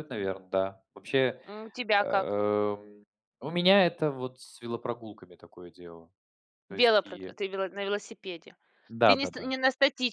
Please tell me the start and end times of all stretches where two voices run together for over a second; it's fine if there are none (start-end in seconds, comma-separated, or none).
none